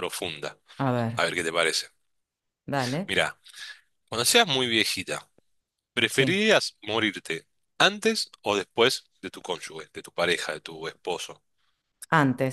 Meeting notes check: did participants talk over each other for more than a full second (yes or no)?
no